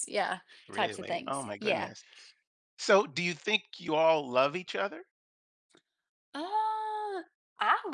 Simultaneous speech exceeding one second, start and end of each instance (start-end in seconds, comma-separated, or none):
0.7-1.9